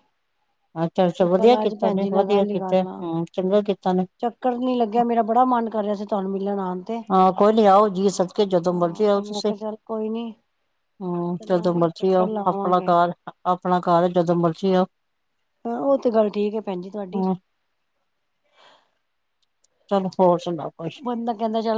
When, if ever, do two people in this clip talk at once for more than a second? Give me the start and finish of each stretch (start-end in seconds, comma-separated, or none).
1.4-3.0